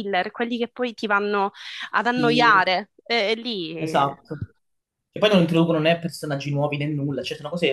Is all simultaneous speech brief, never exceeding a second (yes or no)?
yes